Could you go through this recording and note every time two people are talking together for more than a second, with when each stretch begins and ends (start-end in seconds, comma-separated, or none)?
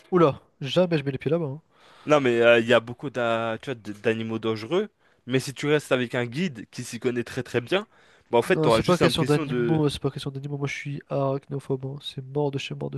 8.4-9.8